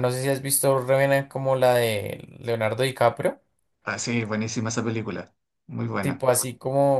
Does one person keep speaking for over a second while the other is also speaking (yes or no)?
no